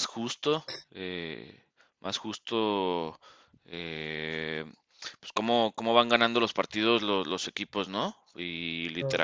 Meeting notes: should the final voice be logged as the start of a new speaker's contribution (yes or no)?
no